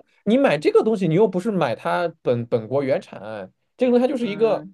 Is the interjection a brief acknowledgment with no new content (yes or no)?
yes